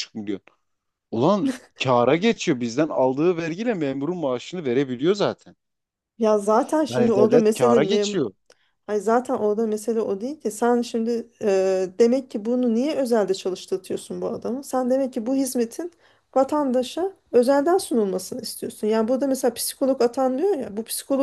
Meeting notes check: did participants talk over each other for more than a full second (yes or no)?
yes